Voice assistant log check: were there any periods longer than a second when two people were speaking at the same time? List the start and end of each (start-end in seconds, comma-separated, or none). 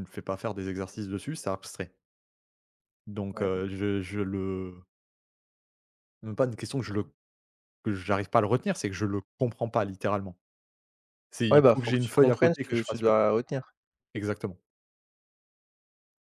11.5-13.2